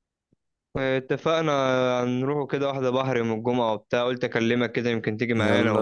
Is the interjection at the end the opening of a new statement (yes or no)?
yes